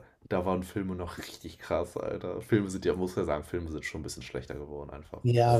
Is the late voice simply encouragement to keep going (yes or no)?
no